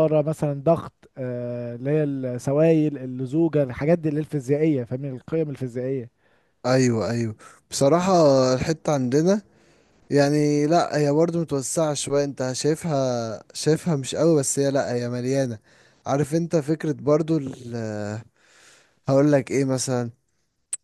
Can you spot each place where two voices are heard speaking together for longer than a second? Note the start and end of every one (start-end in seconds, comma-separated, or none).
none